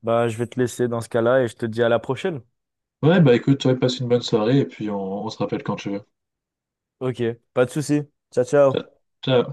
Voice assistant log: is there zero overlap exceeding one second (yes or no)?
yes